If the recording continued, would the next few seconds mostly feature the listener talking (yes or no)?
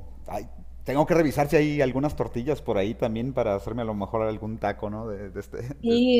yes